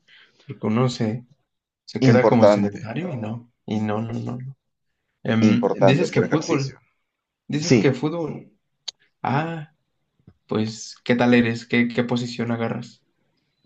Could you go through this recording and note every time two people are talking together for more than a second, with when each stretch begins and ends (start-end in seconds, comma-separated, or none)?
5.4-6.8